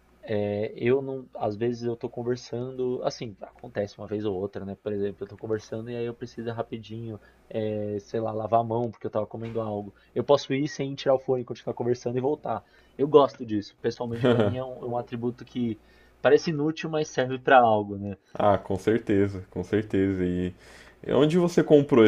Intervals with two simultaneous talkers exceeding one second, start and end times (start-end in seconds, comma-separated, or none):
none